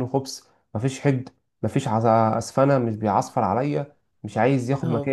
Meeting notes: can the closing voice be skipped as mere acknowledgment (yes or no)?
yes